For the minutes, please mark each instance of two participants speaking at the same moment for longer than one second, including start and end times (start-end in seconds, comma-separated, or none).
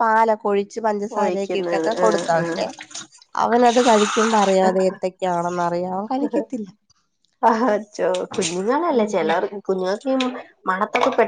1.2-2.6